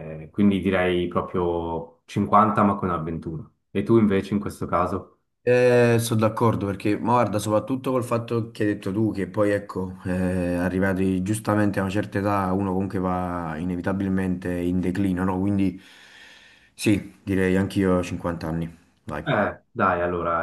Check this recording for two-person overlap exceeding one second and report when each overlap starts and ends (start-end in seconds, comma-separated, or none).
none